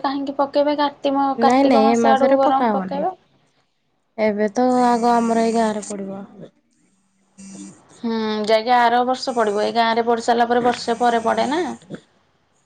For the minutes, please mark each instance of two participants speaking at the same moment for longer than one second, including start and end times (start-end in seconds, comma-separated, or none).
1.4-3.0